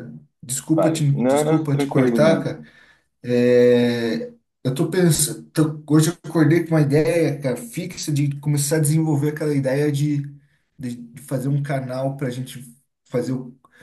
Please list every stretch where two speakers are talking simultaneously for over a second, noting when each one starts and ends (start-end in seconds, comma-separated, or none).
0.7-2.5